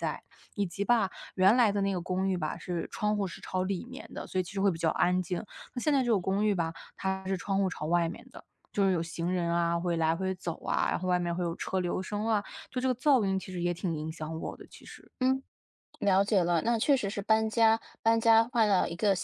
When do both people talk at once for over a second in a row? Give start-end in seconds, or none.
none